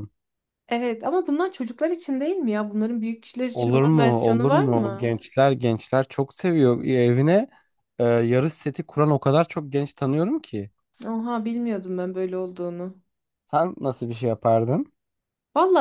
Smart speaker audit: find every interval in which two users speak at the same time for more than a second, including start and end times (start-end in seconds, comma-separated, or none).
3.5-5.2